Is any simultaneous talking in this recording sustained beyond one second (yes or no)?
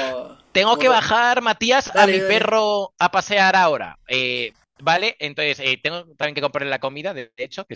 no